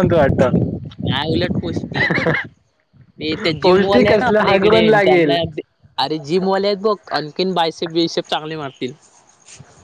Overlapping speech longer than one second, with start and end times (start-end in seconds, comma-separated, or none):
3.6-5.4